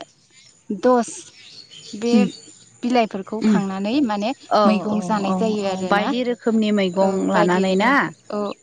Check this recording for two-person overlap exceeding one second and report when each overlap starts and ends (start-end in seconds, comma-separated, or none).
4.7-7.9